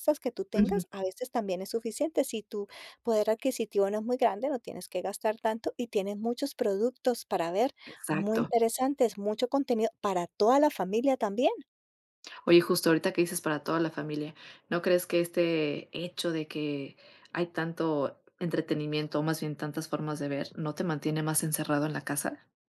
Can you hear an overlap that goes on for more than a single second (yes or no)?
no